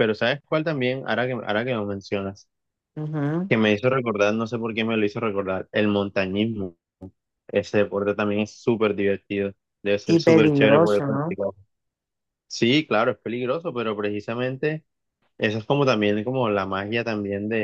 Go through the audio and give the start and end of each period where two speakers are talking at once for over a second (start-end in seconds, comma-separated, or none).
10.1-11.4